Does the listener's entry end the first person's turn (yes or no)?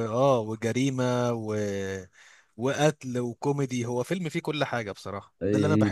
no